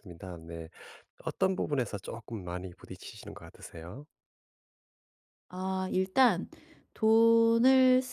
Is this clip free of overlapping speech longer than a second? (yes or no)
yes